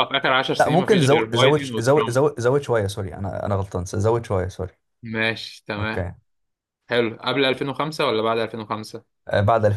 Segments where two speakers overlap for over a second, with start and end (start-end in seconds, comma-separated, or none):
0.6-2.2